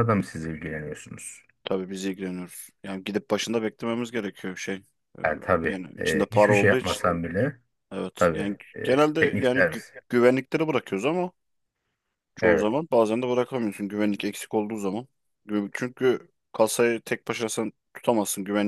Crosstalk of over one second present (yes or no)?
yes